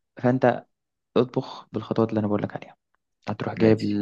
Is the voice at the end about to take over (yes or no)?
no